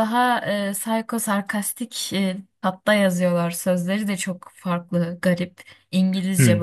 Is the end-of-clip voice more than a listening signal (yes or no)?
yes